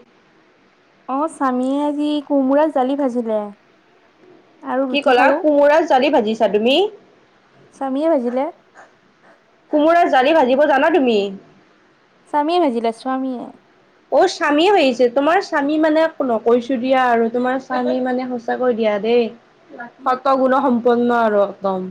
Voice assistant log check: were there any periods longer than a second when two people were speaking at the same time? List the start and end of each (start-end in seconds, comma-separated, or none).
none